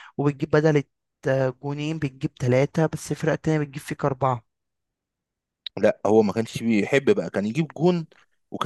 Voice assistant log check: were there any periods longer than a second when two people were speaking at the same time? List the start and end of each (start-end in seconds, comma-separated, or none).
none